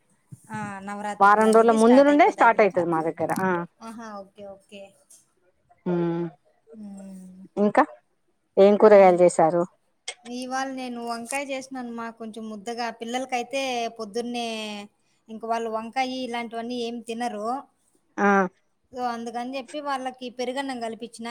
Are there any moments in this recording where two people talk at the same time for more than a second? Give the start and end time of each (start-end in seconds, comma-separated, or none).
1.2-2.9